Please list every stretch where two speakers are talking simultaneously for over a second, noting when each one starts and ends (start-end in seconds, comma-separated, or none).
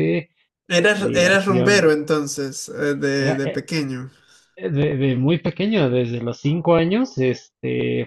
0.7-1.9